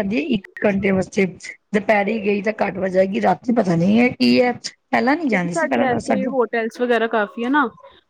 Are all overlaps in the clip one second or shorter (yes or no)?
yes